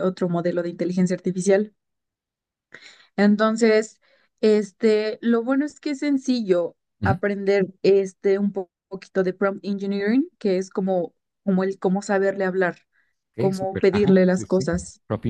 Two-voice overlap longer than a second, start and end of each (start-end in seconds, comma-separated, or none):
13.4-14.7